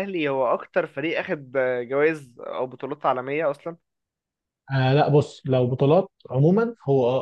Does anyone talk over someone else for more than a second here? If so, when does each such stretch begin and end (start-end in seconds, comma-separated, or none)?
none